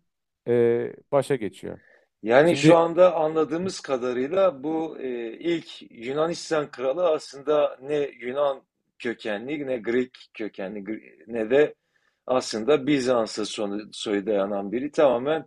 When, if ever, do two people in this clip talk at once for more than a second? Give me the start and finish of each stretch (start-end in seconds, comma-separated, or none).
none